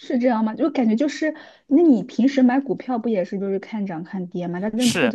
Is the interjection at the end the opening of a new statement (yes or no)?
yes